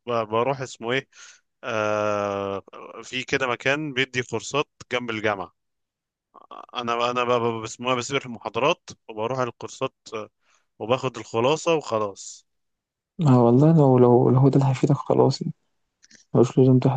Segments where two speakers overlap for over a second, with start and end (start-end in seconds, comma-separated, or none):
none